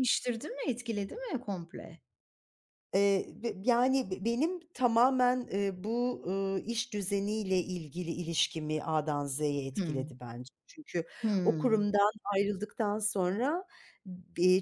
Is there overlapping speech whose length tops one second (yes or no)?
no